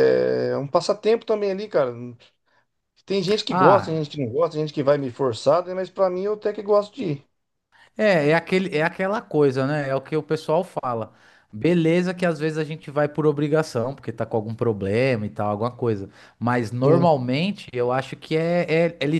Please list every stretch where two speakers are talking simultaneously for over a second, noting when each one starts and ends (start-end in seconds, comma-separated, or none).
none